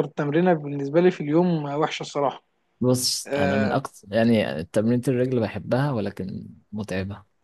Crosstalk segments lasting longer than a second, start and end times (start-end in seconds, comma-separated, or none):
none